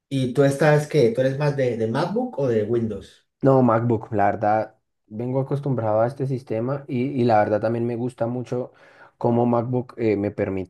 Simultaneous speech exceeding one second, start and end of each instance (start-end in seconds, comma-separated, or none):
none